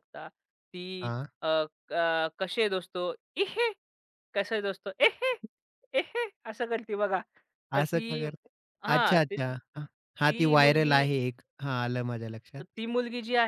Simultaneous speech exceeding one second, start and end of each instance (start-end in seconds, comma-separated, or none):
8.9-11.0